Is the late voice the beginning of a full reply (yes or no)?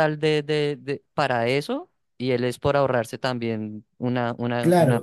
yes